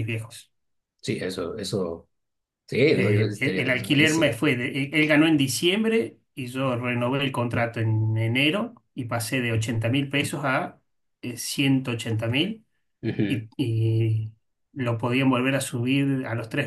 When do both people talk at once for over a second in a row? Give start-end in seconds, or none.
2.9-4.4